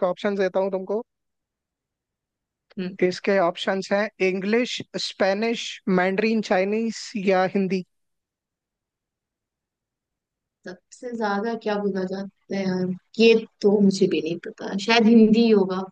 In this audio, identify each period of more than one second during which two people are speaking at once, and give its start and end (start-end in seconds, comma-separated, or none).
none